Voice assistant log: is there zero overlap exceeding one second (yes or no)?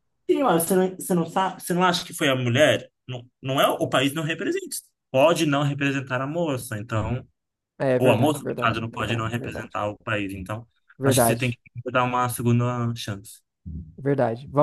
no